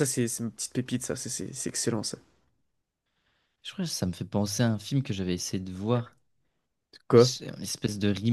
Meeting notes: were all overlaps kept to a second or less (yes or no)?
yes